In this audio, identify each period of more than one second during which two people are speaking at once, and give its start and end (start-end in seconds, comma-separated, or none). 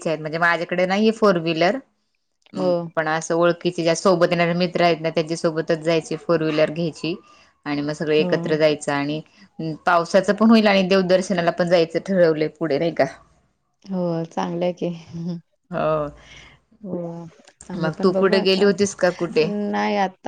17.8-19.4